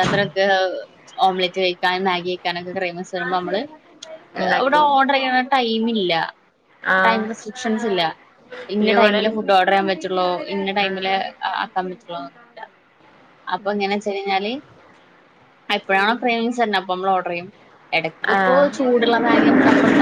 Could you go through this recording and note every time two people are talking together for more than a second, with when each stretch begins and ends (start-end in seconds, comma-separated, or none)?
none